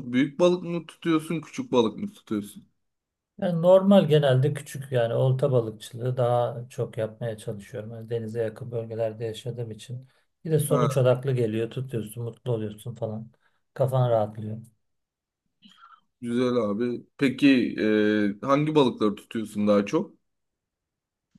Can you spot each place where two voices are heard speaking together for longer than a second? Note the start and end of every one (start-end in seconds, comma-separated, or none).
none